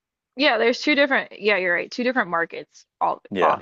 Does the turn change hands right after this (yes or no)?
no